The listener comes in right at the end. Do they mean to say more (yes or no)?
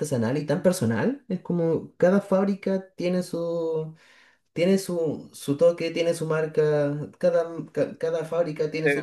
yes